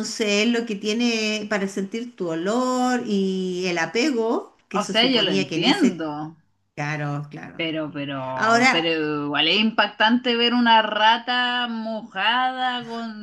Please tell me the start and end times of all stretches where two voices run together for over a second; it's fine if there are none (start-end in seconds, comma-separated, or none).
4.7-6.1